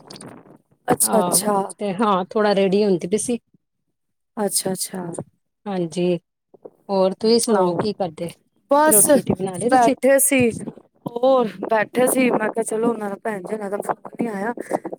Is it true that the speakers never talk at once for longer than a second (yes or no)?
yes